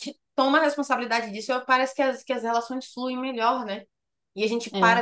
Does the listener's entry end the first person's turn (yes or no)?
no